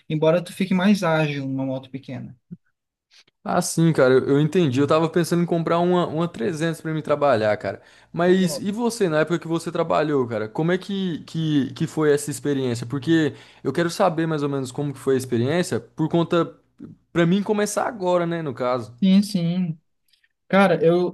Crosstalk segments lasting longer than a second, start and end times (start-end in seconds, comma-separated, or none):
none